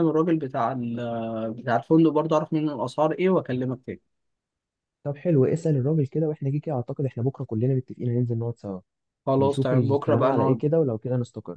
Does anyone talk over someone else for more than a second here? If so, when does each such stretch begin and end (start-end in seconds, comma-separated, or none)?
9.4-10.6